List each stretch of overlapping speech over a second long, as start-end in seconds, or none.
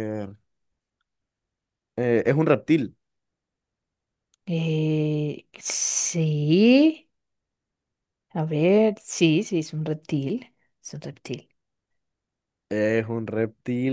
none